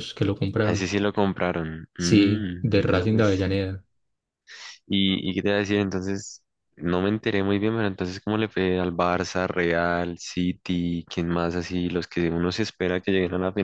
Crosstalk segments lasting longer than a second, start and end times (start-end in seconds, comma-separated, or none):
2.0-3.3